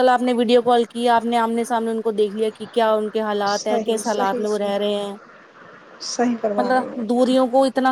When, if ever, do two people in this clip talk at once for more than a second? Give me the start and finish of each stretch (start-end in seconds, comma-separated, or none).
3.5-4.9